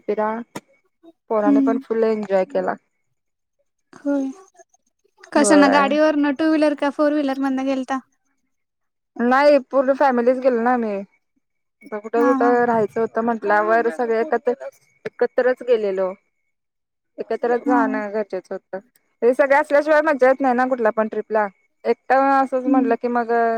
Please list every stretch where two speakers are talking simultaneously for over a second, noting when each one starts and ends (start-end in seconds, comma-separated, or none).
none